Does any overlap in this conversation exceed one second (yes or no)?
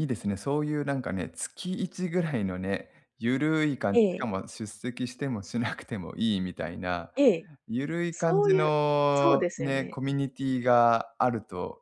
yes